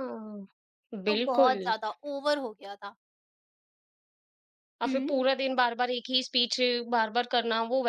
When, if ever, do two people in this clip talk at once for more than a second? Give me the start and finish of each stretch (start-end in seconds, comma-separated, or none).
none